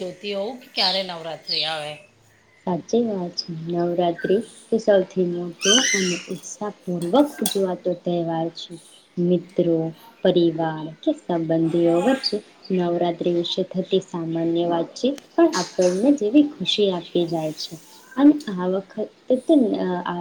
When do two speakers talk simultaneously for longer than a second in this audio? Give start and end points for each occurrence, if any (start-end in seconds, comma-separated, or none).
none